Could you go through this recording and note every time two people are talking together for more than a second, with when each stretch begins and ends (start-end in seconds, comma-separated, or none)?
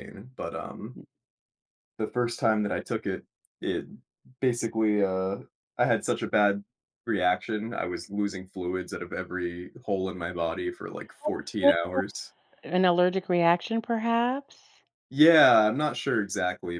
none